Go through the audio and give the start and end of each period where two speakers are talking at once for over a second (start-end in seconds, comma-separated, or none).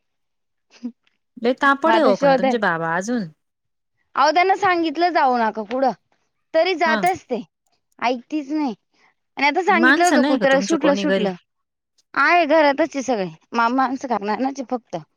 9.8-11.3